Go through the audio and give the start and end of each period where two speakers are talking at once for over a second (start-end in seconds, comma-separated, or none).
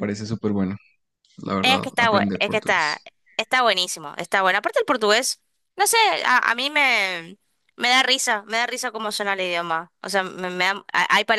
1.6-3.0